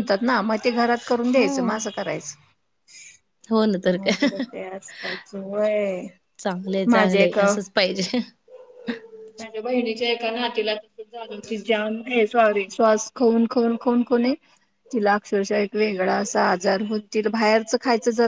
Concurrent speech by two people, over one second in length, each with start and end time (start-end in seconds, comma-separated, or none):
none